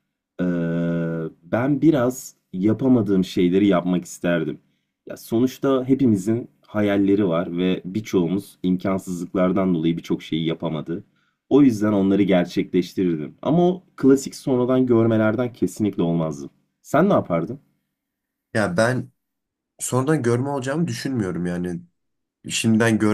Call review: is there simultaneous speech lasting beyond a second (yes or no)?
no